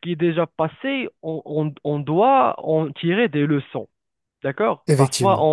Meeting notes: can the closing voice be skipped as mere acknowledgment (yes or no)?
yes